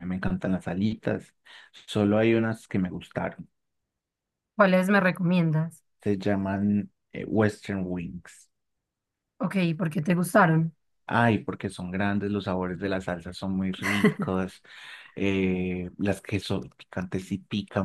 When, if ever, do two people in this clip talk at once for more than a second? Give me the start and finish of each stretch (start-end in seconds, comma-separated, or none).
none